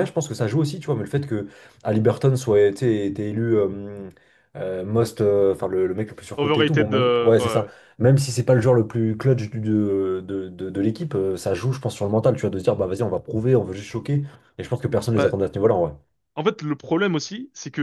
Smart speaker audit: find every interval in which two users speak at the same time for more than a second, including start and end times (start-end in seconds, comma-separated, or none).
6.4-7.7